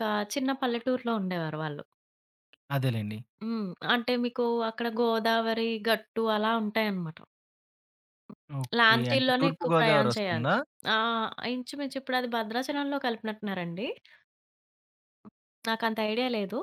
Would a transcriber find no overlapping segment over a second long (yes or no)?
no